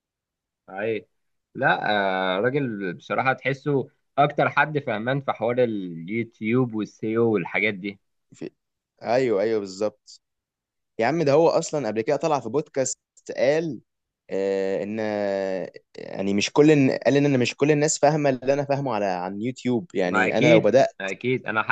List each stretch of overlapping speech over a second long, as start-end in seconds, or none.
none